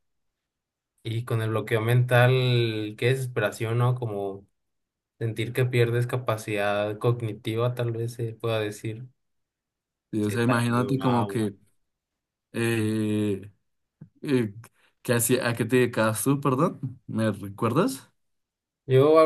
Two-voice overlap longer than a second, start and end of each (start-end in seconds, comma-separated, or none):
10.2-11.4